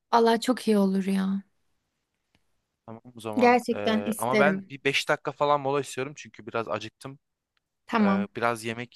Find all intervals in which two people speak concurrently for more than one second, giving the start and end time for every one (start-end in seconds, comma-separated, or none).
3.3-4.7